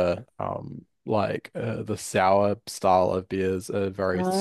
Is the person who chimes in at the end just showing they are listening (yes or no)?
yes